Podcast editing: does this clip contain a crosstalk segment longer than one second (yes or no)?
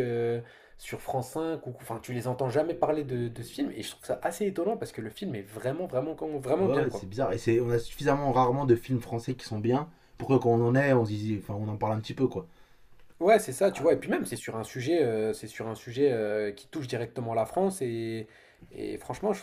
no